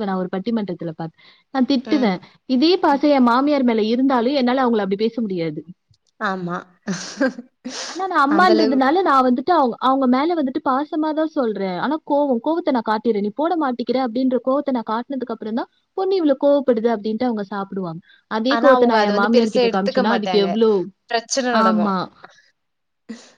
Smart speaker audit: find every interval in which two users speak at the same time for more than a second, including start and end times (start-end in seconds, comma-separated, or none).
18.6-20.5